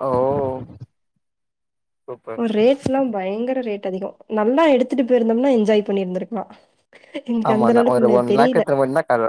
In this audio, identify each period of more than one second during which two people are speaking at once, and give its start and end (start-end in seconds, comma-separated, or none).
none